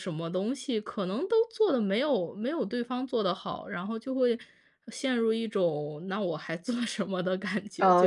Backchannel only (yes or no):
no